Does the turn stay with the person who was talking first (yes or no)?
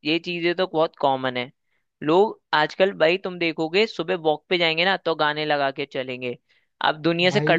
yes